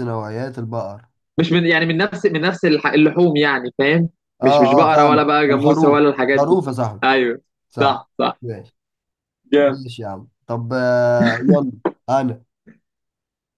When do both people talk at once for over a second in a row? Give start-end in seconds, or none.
4.4-6.6